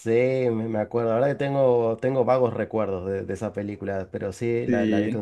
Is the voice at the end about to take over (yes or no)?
no